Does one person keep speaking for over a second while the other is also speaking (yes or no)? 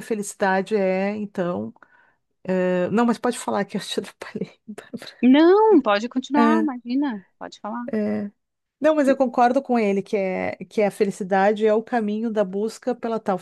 no